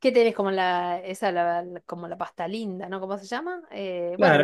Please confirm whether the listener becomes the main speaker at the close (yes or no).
yes